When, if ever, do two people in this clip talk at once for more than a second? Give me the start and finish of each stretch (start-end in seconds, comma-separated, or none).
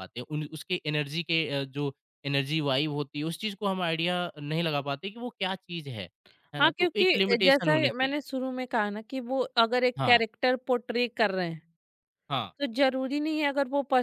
6.6-8.2